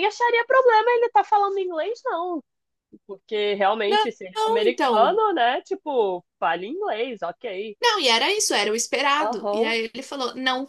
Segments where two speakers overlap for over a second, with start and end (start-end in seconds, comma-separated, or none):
3.9-5.2